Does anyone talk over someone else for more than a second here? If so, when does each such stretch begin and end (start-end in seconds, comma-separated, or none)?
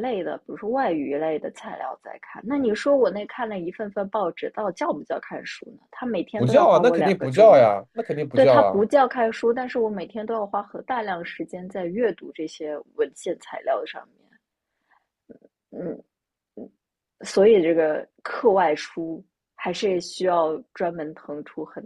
6.3-7.7